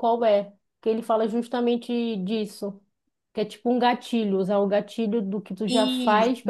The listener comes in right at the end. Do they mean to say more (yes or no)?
no